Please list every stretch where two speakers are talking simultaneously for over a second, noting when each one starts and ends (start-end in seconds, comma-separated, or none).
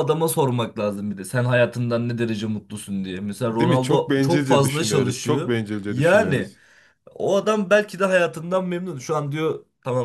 3.5-6.5